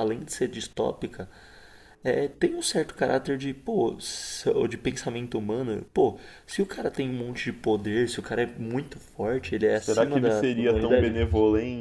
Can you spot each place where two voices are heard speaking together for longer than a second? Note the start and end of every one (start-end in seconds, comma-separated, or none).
9.7-11.1